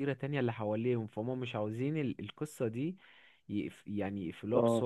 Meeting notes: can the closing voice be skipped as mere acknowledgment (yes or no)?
yes